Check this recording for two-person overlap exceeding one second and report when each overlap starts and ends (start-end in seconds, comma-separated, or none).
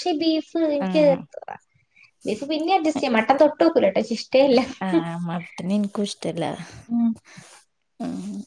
none